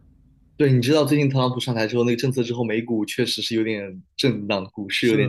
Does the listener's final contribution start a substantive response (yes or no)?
yes